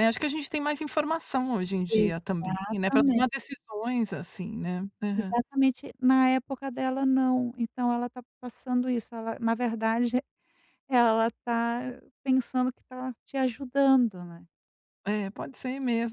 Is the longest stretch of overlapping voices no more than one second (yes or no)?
no